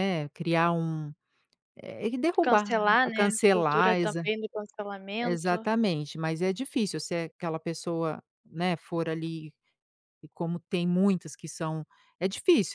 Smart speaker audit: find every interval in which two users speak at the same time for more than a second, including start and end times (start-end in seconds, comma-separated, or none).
2.4-4.2